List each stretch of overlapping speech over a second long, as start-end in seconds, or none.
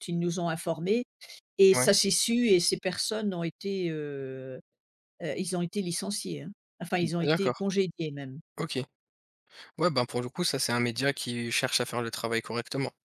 none